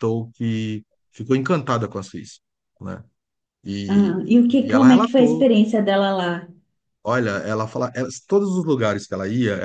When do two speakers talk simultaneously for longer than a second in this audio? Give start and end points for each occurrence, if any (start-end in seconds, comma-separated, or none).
3.9-5.5